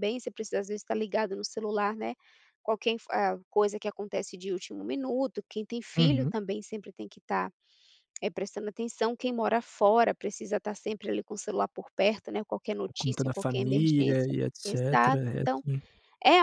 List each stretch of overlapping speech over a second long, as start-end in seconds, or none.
12.8-15.6